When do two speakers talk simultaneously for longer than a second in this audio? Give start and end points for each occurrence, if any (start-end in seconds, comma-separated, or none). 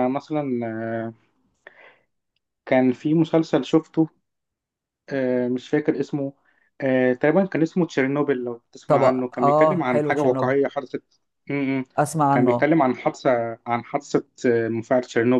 8.9-10.5